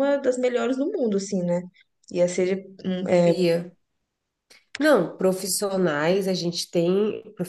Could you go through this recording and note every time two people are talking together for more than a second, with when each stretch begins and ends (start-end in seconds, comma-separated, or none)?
none